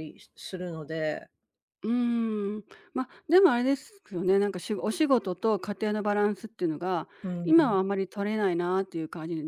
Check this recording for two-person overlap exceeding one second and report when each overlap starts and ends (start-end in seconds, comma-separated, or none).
none